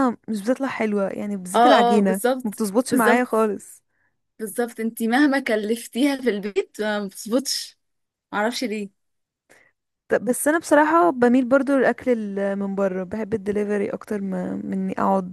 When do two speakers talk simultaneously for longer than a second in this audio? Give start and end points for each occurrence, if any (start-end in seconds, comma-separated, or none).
1.5-3.5